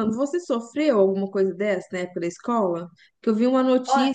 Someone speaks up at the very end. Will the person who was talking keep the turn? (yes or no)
yes